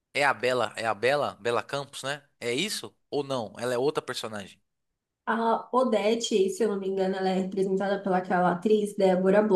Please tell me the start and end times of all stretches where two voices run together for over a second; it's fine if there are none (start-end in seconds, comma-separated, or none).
none